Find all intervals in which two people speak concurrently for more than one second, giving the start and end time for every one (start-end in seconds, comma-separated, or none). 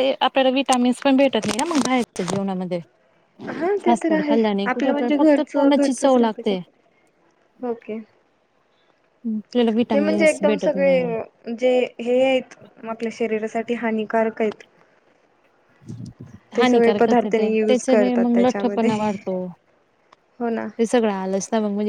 3.9-6.4, 9.9-11.1, 16.6-18.9